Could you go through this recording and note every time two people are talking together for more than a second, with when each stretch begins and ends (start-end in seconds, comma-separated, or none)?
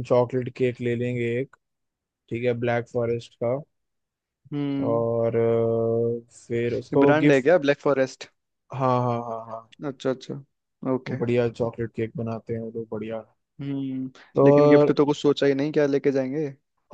none